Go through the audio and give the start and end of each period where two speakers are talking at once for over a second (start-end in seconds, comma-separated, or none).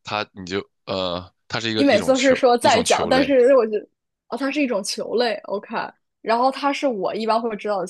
1.8-3.4